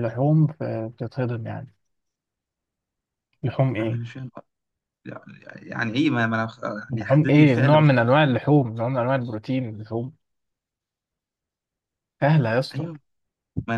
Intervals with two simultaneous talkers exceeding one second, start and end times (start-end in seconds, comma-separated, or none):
6.9-8.2